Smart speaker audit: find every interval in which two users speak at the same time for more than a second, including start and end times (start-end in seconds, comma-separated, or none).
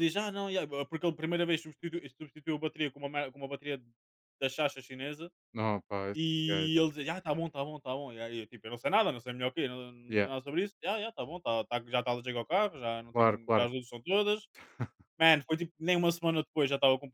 none